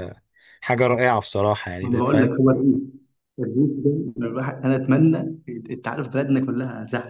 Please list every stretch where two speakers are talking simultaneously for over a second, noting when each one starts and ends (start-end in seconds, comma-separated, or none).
none